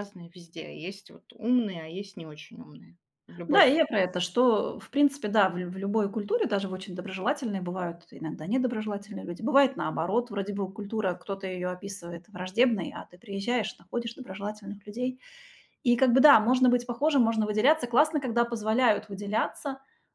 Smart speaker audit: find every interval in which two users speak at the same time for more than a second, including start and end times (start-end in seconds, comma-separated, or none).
none